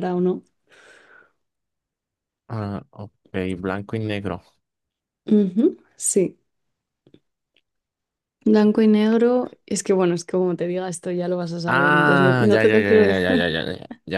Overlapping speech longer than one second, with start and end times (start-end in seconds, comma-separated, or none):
11.7-13.5